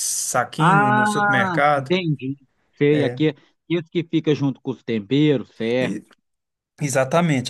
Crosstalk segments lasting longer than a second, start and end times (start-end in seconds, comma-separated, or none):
0.6-2.0